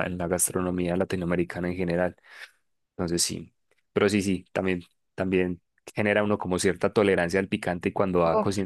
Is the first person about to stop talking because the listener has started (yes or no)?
no